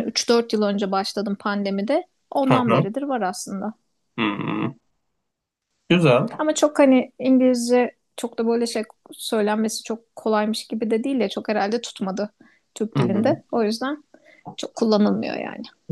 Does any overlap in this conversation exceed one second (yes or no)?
no